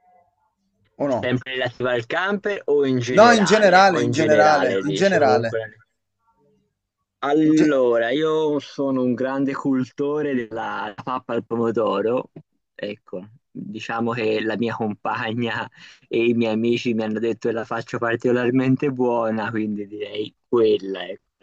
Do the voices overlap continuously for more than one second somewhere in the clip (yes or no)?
yes